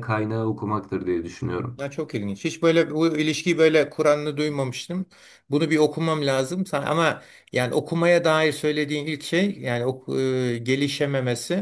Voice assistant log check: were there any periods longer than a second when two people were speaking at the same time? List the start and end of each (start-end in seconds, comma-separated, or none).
none